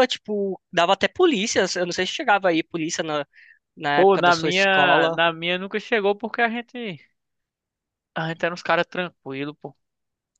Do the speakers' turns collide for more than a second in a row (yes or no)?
yes